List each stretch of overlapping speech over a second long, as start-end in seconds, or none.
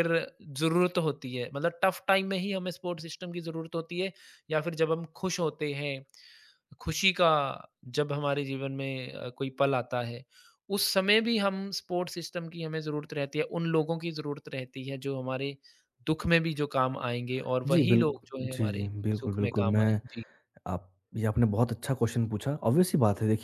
17.7-20.0